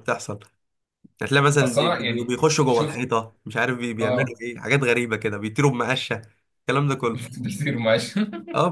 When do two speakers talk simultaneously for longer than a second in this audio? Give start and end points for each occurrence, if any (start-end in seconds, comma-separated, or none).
1.6-3.0